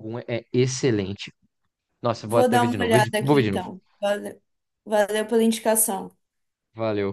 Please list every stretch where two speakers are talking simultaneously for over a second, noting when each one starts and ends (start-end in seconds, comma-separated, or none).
2.2-3.7